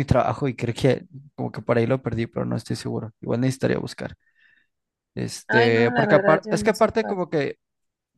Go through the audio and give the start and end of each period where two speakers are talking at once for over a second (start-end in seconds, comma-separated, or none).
5.5-7.2